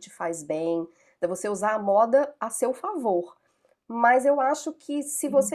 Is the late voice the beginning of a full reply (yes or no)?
no